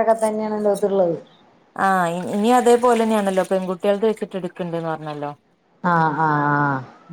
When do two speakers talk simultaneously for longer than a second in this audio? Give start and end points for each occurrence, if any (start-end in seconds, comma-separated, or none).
none